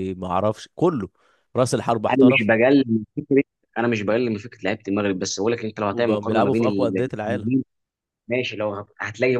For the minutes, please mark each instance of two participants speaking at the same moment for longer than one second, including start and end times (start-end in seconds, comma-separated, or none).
5.9-7.5